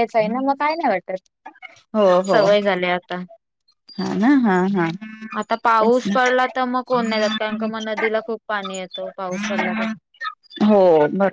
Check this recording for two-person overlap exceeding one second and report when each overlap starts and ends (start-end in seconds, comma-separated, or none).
none